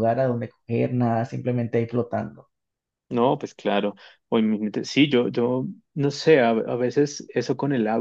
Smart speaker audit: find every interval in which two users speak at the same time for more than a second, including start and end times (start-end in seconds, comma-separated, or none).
none